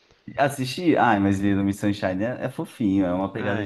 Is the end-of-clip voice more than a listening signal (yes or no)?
yes